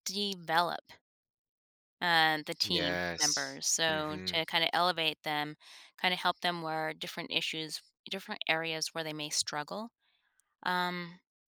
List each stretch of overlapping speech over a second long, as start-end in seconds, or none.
2.6-4.4